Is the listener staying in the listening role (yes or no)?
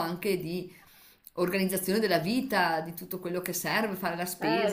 yes